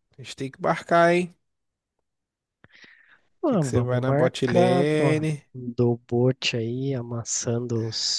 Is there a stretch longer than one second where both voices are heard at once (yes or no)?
yes